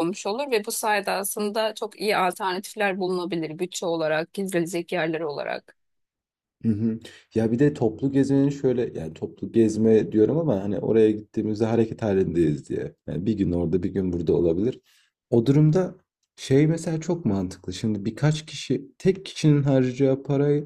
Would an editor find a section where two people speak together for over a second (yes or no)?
no